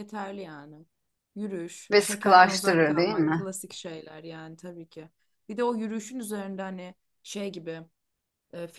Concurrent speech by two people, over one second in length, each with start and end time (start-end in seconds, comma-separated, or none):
1.9-3.5